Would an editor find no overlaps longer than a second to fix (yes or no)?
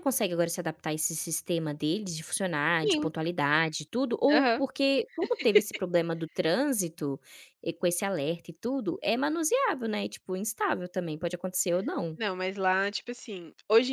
yes